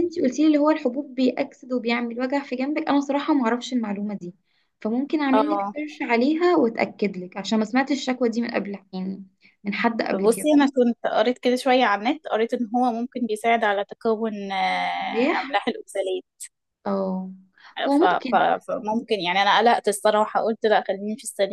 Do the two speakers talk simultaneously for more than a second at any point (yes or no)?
no